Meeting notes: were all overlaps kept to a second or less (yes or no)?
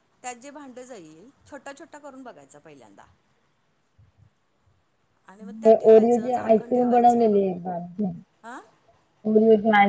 no